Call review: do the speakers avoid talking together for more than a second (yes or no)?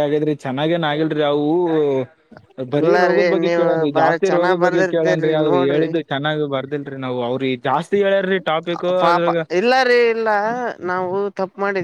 no